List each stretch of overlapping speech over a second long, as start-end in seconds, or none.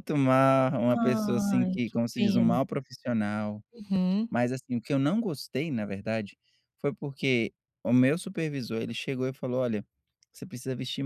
1.0-2.6